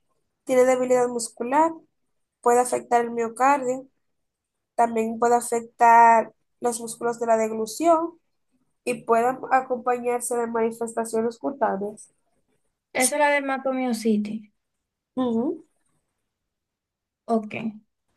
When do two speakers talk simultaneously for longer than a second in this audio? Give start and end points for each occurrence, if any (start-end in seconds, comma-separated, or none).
none